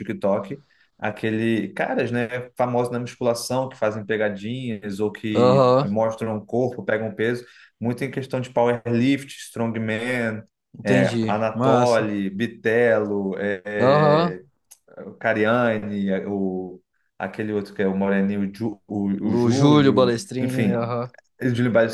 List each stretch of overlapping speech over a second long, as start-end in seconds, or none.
10.8-12.1, 19.2-20.9